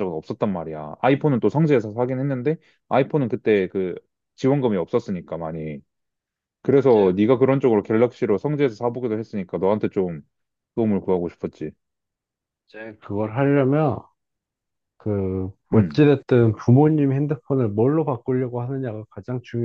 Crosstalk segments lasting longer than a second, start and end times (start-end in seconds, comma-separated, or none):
none